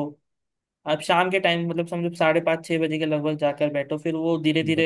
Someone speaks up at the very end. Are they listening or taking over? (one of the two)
listening